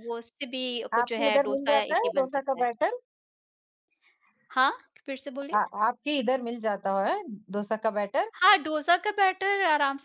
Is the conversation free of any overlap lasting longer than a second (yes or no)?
no